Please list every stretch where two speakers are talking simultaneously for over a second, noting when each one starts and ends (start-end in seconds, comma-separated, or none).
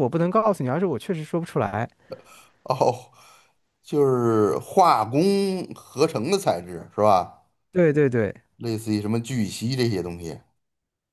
none